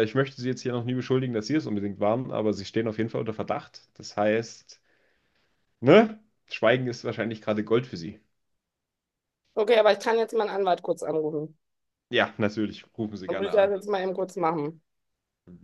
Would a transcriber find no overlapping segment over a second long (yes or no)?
yes